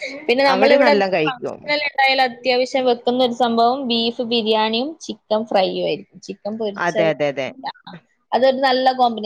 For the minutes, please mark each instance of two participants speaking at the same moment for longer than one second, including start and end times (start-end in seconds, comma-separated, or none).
none